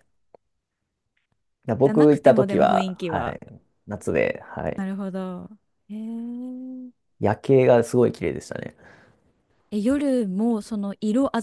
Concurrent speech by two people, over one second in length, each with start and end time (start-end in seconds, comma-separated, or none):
1.8-3.4